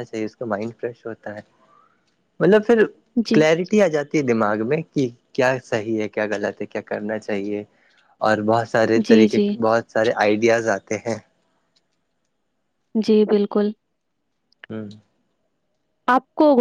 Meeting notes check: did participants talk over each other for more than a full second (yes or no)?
no